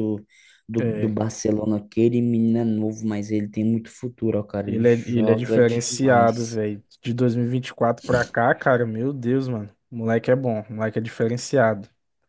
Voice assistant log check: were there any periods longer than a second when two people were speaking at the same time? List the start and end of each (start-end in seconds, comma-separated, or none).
4.7-6.6